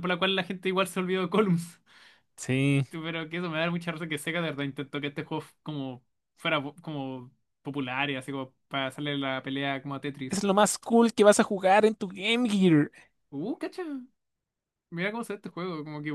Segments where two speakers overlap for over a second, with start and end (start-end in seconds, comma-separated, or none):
none